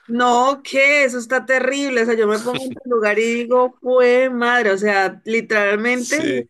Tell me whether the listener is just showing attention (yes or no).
yes